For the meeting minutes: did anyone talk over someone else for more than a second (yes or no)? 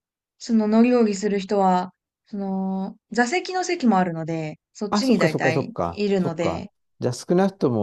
yes